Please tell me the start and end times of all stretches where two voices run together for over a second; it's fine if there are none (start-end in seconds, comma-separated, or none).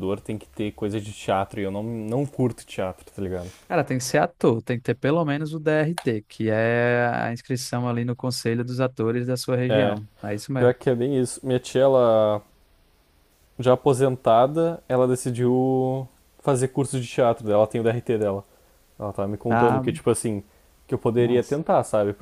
none